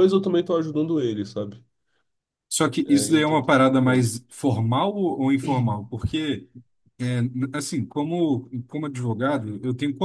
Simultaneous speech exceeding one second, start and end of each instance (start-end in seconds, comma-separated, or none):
2.9-4.2